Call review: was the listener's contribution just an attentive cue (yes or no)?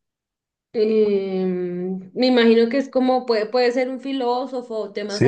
no